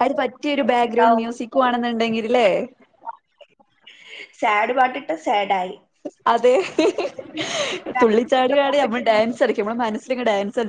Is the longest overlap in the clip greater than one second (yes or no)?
yes